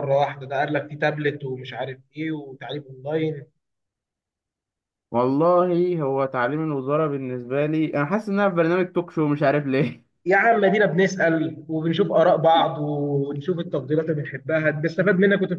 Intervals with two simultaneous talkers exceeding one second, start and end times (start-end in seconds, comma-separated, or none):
none